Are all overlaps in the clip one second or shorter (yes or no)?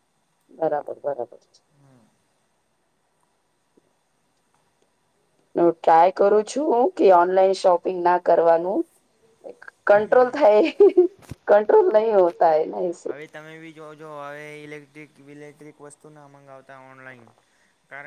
yes